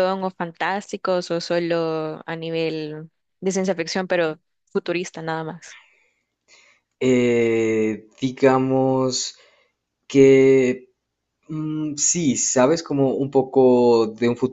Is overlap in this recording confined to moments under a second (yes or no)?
yes